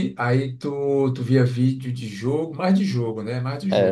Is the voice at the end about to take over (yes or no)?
yes